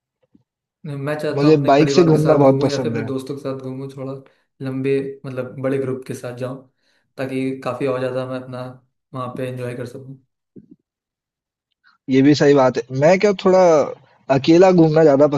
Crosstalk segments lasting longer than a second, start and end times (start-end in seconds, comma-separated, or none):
1.4-3.1